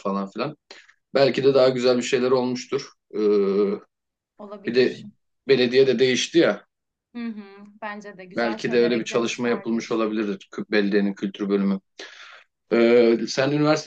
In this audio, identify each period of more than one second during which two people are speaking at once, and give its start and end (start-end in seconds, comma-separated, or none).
8.3-10.0